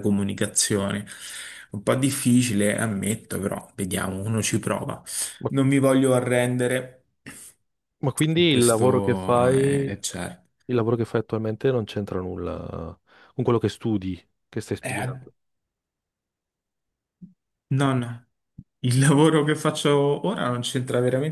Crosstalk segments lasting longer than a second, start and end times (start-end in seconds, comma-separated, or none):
8.4-9.8